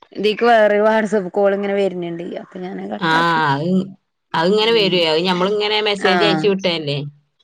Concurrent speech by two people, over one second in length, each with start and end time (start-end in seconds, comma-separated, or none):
none